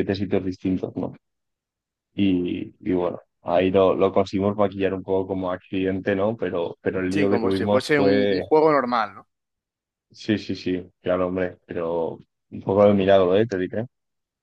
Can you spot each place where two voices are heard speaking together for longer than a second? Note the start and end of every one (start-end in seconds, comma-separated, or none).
7.1-8.5